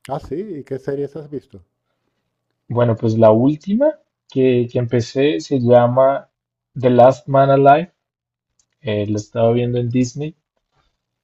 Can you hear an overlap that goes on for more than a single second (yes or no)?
no